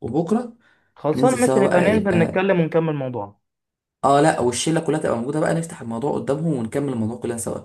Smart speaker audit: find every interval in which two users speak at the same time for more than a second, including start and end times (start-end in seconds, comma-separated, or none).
1.1-2.4